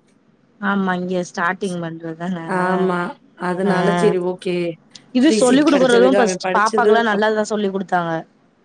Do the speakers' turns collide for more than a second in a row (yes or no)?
yes